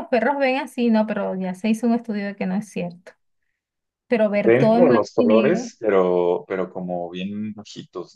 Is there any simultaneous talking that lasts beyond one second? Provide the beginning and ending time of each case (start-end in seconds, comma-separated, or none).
4.4-5.7